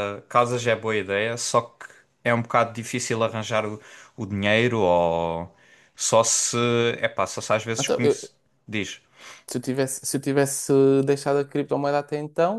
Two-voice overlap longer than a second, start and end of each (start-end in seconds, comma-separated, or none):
none